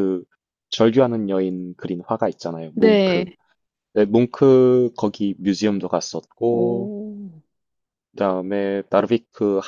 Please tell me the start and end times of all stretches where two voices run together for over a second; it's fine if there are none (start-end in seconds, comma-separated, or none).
none